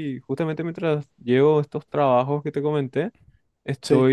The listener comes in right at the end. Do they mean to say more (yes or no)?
no